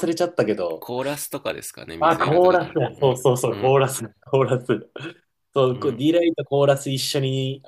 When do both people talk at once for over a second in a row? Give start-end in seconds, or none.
2.0-3.8